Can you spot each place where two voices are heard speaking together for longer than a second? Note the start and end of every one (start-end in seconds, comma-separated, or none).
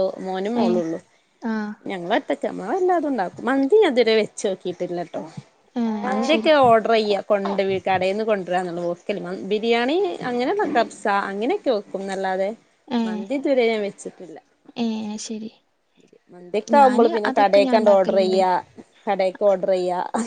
16.8-18.4